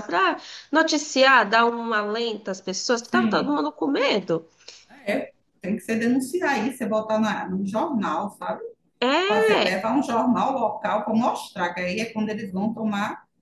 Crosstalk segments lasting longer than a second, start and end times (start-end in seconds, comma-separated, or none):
none